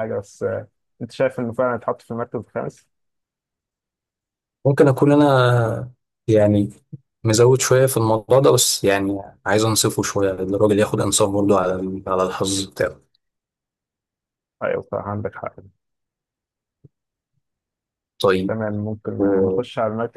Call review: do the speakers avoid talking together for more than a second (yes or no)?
yes